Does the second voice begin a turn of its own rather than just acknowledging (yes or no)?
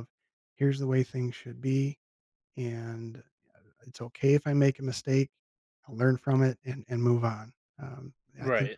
no